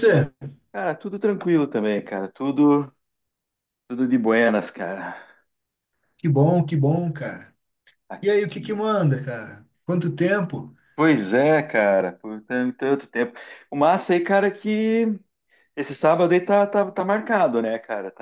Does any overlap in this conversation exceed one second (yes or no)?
no